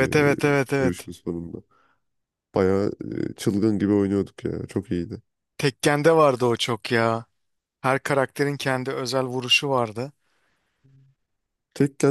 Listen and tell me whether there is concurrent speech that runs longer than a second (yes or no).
no